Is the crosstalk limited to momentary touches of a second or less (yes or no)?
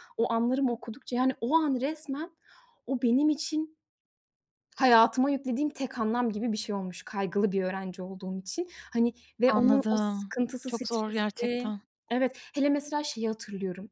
no